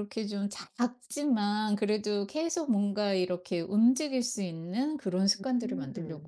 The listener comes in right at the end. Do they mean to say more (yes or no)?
yes